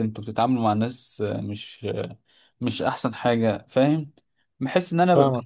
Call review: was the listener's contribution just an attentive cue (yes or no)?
yes